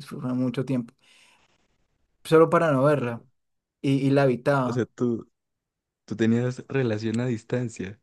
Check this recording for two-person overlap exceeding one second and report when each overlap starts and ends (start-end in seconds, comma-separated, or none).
none